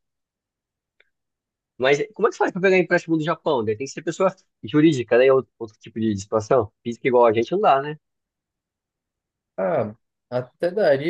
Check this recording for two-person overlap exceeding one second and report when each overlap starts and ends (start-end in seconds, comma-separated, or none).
none